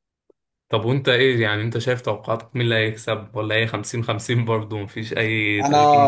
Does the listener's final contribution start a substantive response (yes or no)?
yes